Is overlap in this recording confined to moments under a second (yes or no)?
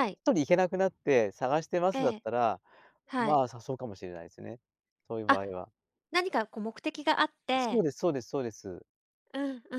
yes